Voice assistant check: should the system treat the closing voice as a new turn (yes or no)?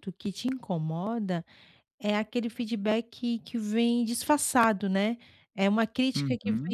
no